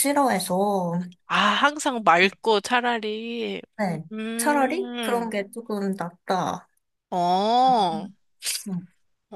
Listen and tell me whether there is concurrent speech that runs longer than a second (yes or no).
yes